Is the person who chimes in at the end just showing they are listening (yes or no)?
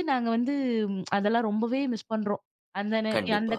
yes